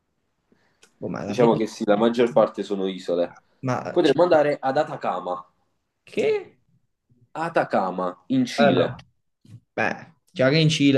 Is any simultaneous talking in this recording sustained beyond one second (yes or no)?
no